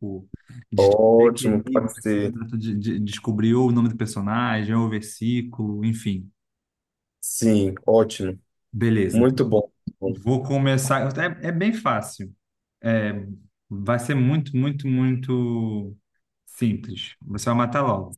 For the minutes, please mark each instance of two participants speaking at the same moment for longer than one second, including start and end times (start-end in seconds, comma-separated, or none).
0.8-2.3